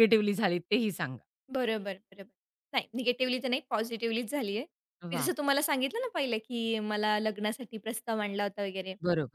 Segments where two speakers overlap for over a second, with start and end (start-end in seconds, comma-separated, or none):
none